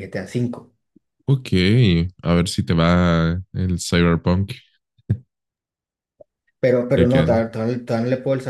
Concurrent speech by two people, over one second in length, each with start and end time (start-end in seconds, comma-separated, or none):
none